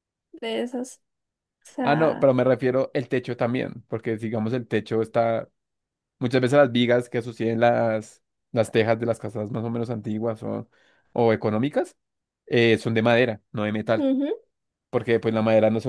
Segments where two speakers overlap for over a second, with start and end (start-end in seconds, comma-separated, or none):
none